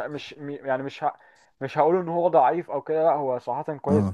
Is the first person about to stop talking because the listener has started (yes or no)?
no